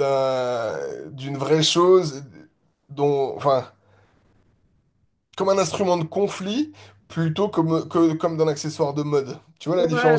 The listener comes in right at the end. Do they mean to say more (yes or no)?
yes